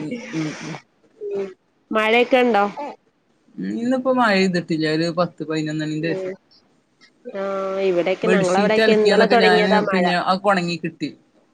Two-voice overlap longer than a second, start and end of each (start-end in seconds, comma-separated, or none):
8.3-10.0